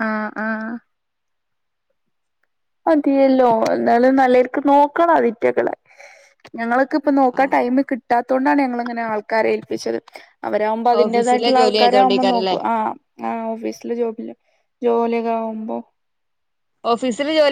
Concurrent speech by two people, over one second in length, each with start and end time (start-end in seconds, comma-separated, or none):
11.0-12.6